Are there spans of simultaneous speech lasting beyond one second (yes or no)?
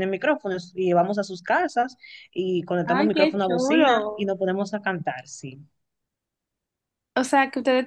yes